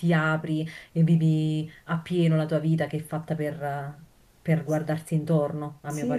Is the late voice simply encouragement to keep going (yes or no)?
no